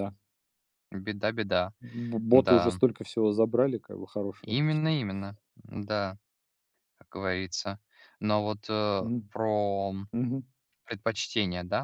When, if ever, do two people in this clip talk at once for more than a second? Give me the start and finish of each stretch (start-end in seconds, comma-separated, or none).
none